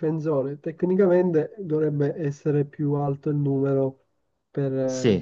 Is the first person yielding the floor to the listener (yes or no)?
yes